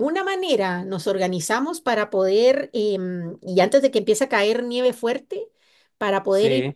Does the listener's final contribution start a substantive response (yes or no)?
no